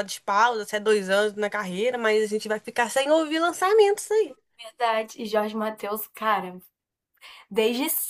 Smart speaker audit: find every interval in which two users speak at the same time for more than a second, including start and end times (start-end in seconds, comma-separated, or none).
none